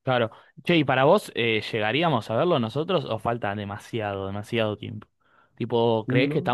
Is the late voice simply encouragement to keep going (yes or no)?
yes